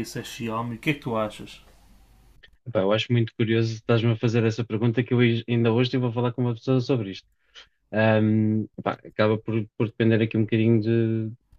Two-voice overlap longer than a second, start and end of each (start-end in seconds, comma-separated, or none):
none